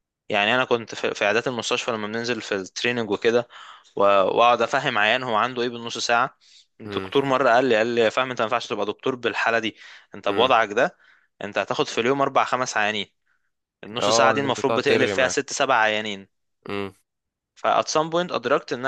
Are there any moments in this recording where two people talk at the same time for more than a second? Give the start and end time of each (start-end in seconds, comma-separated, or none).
14.0-15.3